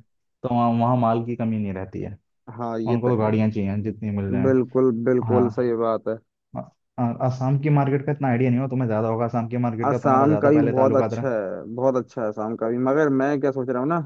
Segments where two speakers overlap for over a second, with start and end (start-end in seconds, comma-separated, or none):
9.8-11.3